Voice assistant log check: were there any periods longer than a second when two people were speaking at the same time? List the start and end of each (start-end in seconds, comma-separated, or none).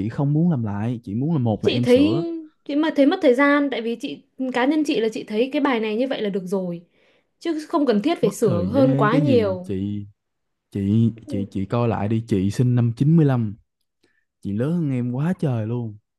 8.2-9.7